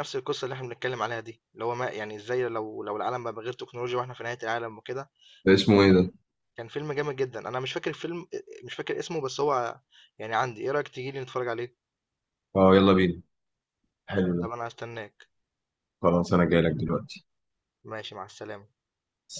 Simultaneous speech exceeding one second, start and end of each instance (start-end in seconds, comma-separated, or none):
none